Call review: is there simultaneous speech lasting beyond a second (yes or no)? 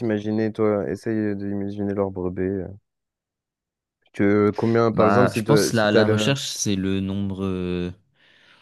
yes